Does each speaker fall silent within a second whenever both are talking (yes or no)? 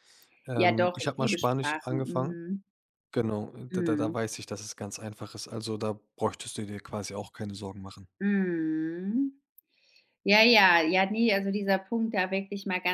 no